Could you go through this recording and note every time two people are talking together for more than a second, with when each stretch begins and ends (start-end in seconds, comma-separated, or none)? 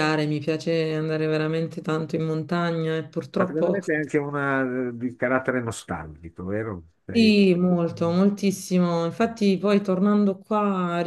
none